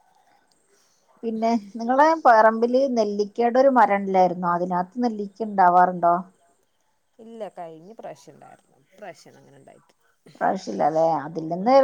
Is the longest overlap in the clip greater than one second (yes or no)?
no